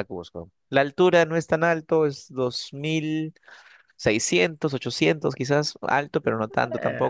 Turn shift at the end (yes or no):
yes